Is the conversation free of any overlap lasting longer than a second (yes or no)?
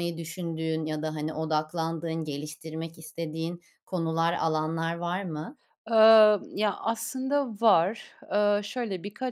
yes